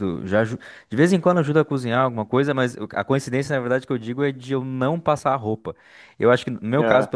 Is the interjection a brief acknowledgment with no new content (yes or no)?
yes